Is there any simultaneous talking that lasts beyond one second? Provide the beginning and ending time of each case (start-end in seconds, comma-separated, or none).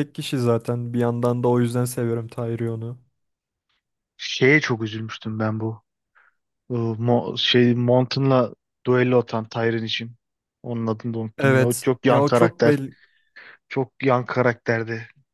11.4-12.8